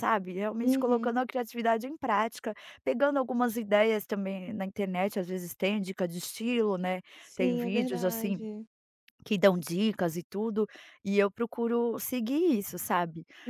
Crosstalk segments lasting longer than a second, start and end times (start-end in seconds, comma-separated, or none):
7.2-8.4